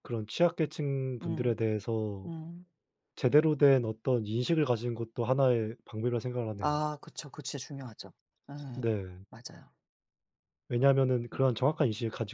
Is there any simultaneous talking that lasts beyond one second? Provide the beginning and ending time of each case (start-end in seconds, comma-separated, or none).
none